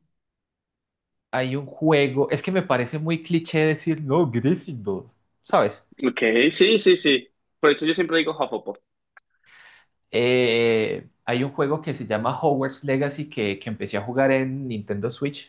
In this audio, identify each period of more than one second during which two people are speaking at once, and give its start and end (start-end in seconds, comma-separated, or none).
none